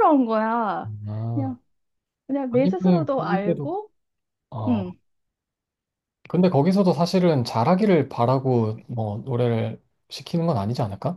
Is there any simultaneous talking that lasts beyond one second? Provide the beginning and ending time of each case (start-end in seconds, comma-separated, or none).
2.5-3.8